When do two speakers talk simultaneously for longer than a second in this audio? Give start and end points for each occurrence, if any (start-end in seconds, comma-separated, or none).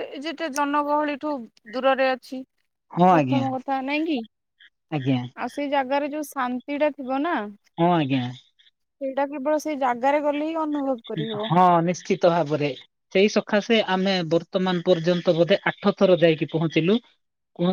none